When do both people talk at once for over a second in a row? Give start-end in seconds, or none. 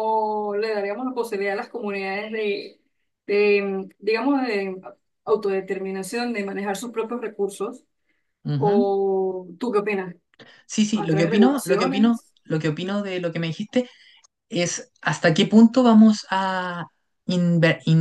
10.9-12.3